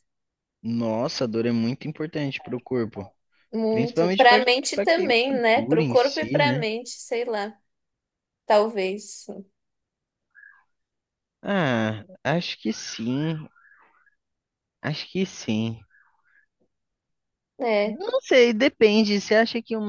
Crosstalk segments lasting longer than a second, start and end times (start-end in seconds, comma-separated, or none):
3.7-6.6